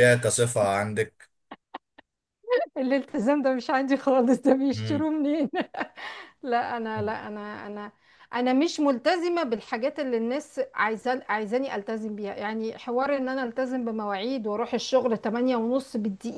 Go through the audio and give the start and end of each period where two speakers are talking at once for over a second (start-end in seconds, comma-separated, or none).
none